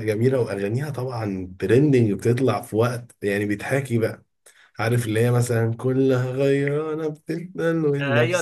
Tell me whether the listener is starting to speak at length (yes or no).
yes